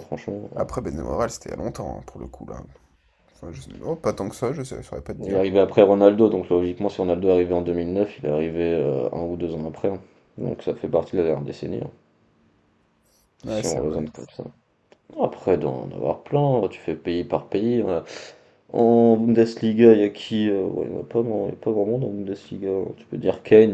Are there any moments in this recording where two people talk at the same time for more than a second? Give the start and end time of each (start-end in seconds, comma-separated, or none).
none